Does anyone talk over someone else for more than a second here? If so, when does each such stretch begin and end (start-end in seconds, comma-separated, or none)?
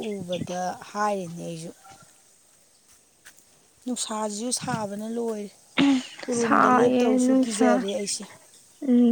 6.3-7.8